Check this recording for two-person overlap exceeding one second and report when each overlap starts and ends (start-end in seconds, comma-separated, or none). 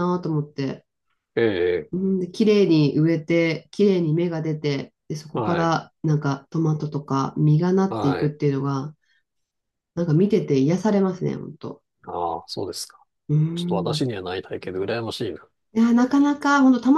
none